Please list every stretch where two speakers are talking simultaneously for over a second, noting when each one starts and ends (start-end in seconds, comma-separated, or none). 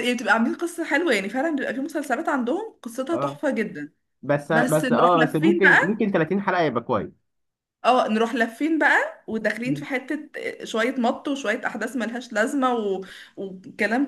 4.5-6.0